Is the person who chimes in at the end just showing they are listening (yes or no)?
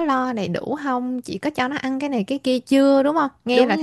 no